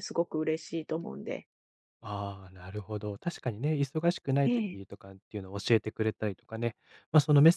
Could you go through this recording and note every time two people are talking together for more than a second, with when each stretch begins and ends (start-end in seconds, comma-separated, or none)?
none